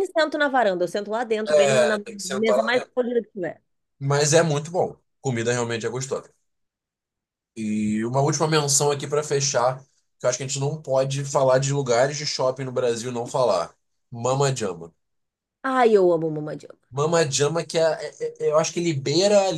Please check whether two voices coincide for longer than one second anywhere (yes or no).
yes